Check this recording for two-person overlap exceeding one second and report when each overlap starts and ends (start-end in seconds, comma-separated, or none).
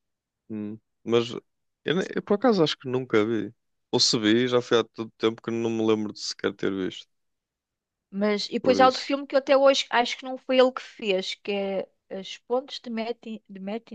none